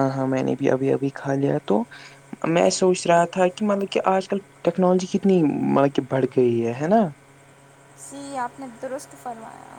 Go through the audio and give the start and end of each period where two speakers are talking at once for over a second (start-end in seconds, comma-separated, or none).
none